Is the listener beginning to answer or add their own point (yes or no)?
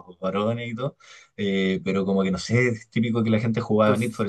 no